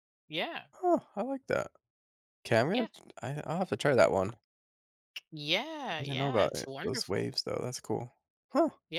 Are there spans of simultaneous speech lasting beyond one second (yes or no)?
yes